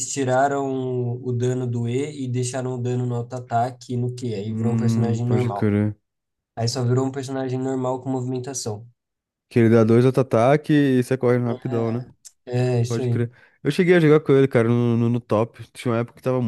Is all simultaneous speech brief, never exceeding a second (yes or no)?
no